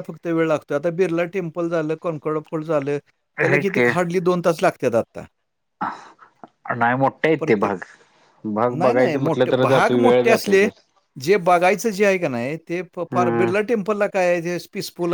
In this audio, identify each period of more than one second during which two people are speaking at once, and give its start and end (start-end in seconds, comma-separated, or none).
8.8-10.7